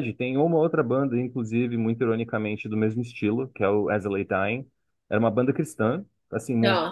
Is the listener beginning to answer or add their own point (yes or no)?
no